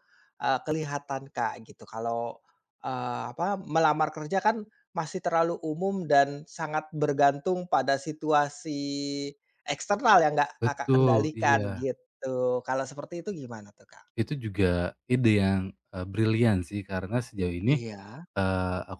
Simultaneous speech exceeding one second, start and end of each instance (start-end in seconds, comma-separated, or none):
10.6-11.9